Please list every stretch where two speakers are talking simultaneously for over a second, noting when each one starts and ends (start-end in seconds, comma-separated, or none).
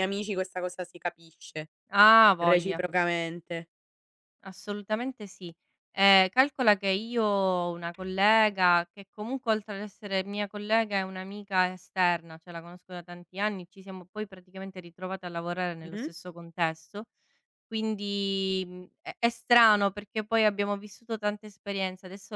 none